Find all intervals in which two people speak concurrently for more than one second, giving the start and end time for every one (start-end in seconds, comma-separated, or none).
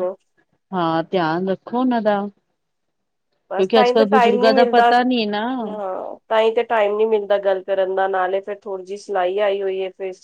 3.5-4.9